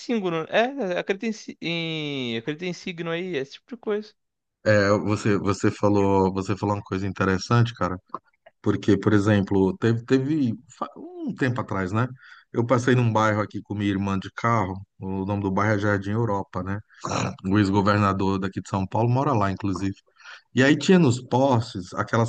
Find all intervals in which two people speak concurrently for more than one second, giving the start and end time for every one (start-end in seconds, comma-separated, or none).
none